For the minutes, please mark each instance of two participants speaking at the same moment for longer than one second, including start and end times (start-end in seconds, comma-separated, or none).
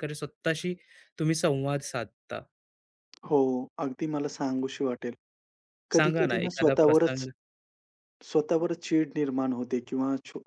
6.0-7.2